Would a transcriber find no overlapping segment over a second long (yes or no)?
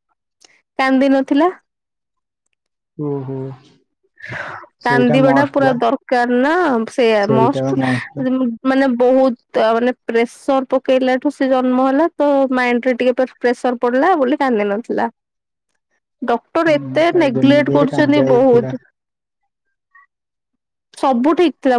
no